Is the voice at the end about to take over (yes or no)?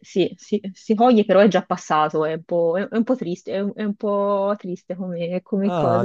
yes